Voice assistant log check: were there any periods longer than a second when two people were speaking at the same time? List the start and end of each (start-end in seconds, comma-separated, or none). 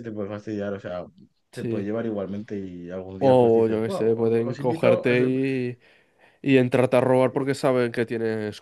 3.2-5.3